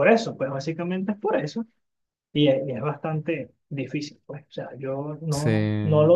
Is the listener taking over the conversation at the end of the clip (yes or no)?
no